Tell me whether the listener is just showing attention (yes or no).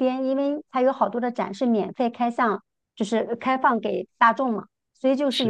yes